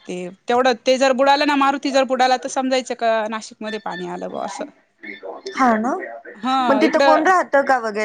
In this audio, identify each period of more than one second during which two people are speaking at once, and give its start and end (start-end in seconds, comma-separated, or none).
none